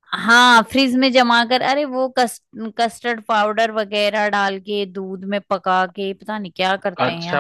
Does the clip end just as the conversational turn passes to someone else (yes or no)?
yes